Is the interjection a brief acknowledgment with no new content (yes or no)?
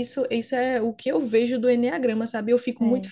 yes